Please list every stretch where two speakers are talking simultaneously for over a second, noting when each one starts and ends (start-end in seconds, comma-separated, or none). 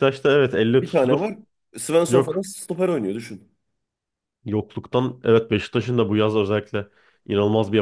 none